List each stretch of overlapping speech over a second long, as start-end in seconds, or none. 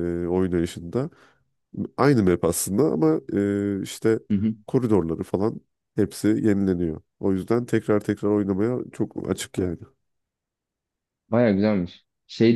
none